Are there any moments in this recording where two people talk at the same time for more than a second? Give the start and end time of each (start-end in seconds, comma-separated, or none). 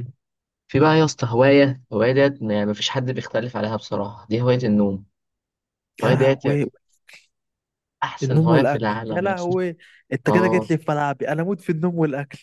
8.2-9.6